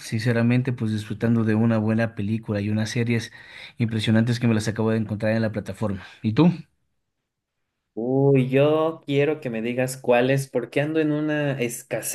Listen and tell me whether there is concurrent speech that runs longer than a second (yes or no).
no